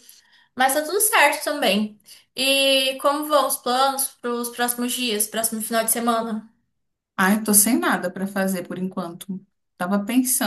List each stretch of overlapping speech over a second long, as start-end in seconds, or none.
none